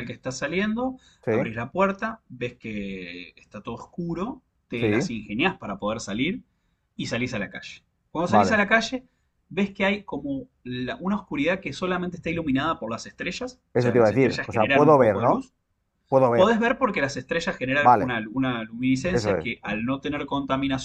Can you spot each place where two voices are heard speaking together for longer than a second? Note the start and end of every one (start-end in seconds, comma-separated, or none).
13.8-15.5